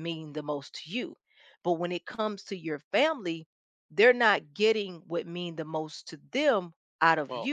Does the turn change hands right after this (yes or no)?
no